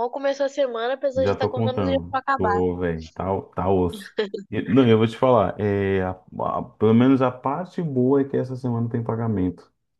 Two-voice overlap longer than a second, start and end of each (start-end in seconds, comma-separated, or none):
1.1-2.6